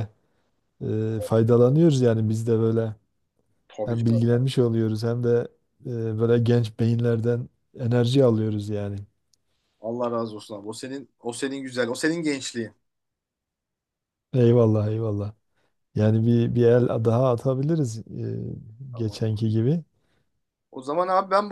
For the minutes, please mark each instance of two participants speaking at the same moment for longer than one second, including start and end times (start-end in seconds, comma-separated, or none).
none